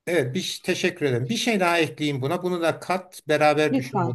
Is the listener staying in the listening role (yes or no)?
yes